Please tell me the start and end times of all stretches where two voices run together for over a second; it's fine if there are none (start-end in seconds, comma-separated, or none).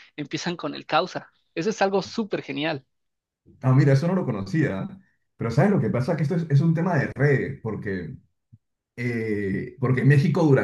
none